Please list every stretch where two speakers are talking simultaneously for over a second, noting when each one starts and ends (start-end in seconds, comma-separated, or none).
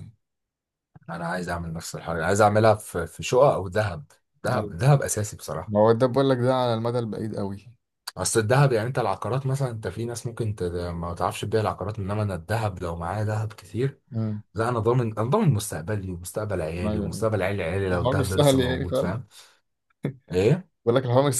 17.9-19.2